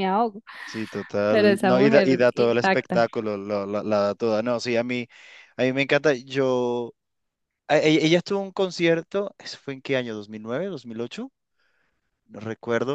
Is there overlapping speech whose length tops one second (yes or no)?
yes